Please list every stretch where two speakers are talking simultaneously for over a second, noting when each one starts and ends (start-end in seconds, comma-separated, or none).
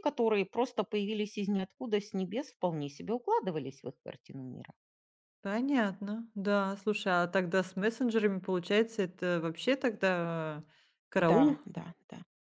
none